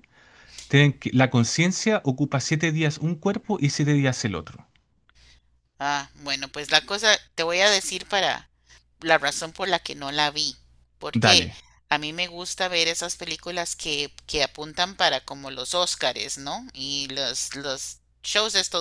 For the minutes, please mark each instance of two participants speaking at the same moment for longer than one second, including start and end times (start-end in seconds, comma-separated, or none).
none